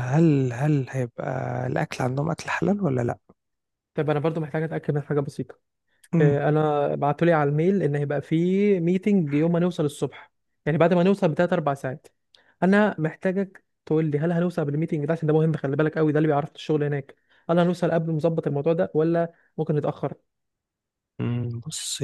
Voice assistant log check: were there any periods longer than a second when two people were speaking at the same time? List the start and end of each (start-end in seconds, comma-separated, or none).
none